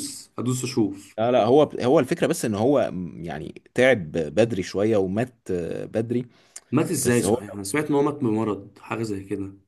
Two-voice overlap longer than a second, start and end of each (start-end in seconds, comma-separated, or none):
none